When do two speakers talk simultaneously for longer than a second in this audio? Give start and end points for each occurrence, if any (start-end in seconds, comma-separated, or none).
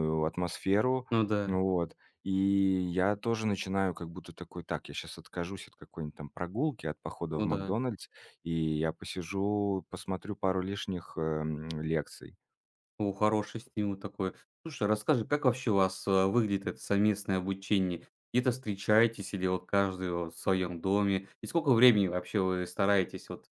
none